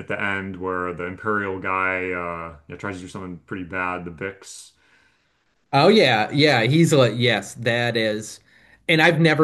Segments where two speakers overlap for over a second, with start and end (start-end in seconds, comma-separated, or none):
none